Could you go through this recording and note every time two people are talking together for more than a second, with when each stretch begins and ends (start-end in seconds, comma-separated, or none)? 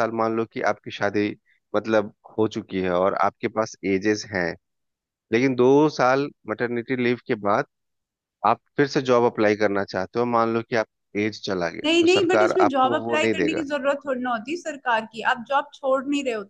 11.8-13.6